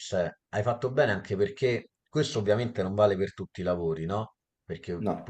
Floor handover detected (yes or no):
no